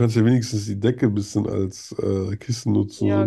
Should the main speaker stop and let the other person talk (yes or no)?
yes